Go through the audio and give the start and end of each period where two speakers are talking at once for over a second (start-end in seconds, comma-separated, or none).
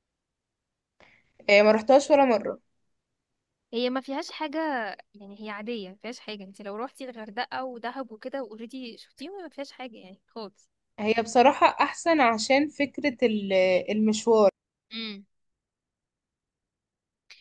none